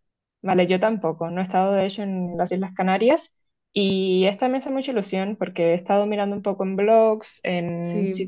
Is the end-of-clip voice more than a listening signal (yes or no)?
no